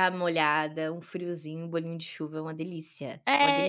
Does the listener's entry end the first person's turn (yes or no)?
yes